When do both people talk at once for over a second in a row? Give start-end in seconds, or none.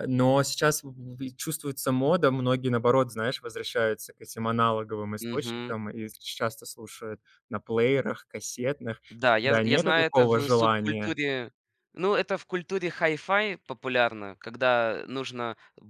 9.4-11.2